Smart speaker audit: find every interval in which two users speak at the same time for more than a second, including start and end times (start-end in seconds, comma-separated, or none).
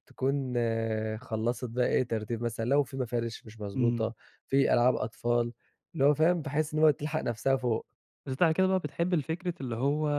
none